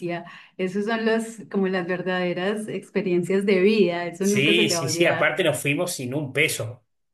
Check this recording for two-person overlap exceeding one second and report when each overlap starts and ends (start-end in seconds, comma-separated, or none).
4.2-5.4